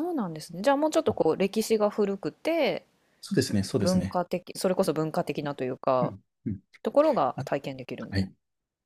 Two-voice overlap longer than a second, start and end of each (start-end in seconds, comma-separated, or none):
none